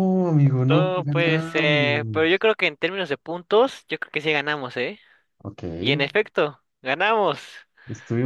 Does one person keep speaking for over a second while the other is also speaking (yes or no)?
yes